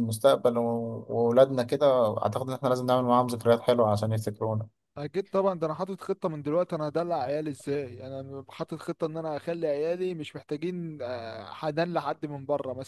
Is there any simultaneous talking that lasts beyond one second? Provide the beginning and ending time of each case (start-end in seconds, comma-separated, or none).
none